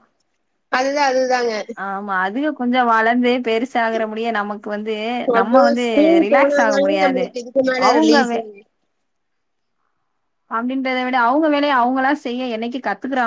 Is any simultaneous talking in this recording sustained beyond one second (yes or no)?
yes